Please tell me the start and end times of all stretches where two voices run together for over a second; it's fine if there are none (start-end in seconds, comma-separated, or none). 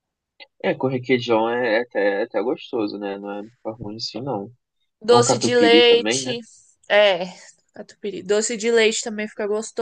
5.1-6.3